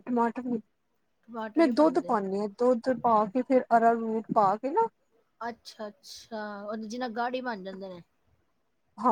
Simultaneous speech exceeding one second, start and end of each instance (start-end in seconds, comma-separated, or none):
none